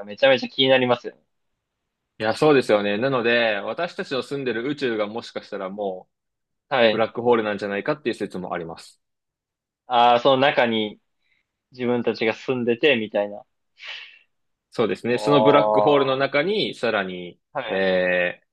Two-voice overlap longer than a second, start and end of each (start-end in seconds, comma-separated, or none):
15.1-16.4